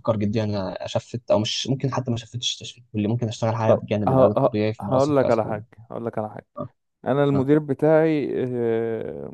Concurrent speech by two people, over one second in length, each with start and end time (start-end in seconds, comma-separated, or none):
3.7-5.6